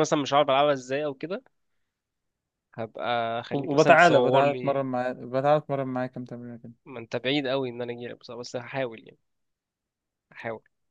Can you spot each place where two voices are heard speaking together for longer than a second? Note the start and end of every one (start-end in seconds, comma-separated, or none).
3.5-4.8